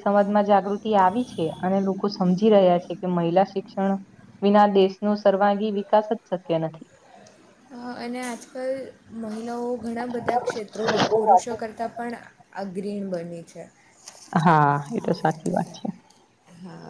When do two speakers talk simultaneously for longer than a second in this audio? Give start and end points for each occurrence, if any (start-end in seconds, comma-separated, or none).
10.2-11.4